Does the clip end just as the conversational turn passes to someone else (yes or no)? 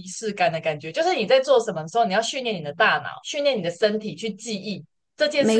no